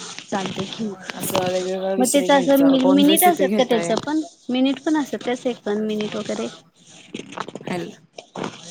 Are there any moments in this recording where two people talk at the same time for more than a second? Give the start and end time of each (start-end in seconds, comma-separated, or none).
2.0-3.9